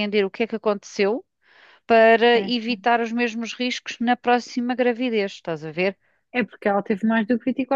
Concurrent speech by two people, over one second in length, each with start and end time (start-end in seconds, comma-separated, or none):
none